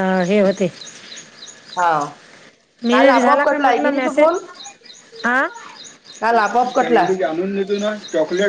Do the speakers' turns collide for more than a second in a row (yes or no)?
yes